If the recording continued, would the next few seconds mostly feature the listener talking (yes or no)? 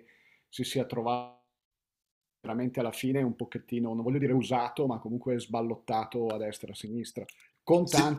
no